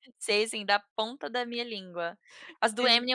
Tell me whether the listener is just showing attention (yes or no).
yes